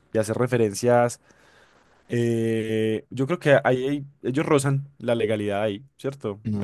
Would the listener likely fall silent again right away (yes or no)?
no